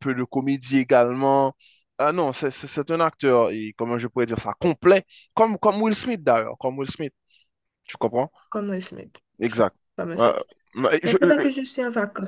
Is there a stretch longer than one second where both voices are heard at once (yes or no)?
no